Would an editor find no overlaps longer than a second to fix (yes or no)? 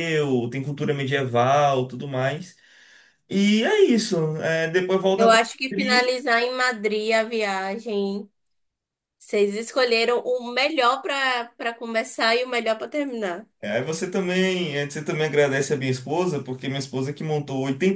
yes